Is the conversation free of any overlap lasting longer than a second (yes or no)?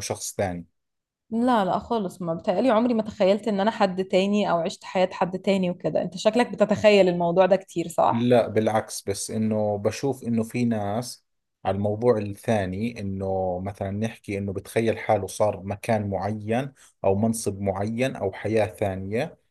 yes